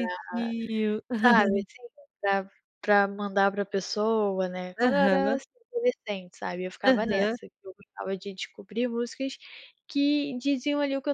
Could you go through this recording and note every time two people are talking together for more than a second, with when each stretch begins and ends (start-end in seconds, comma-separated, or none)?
none